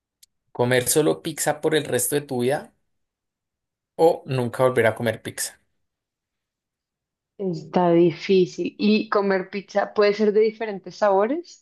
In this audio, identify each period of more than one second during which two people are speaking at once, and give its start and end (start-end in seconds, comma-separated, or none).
none